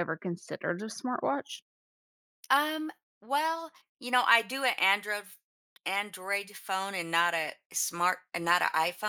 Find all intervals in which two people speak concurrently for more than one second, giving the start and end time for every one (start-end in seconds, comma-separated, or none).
none